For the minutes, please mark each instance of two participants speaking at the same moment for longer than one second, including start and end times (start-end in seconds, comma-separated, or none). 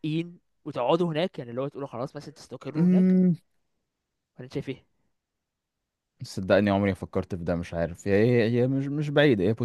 none